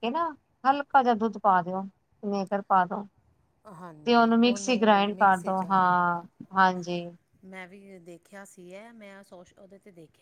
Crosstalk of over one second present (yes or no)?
yes